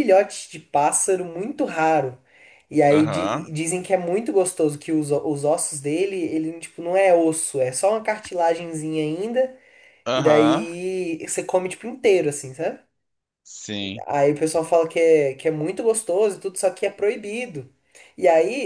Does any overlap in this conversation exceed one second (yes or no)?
no